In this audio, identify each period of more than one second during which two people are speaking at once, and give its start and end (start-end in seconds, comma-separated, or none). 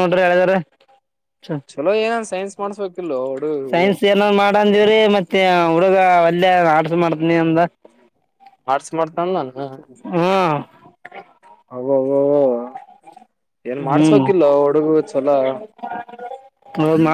none